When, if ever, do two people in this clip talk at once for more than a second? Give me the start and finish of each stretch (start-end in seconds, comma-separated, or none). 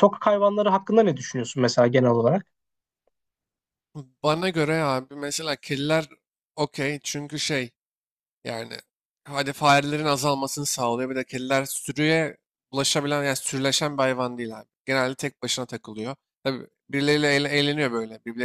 none